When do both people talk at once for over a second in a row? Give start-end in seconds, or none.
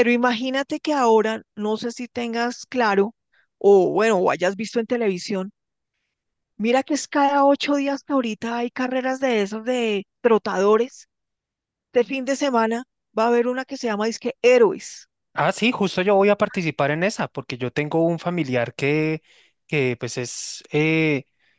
none